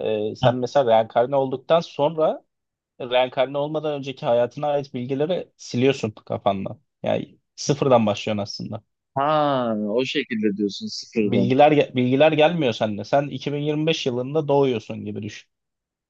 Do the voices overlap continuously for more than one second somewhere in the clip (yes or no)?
no